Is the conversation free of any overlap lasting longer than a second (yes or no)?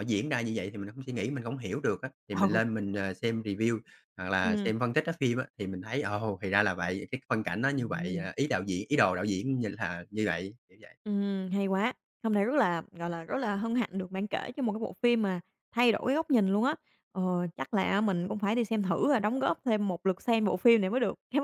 yes